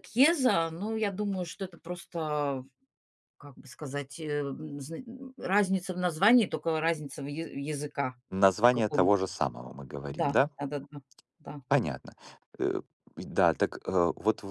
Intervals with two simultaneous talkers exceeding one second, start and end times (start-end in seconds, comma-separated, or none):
none